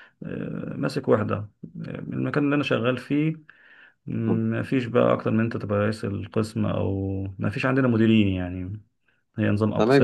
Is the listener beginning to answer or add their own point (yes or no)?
yes